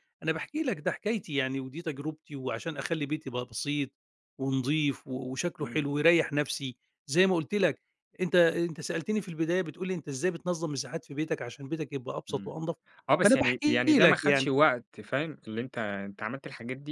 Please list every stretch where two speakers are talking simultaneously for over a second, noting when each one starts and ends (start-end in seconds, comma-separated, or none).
13.2-14.5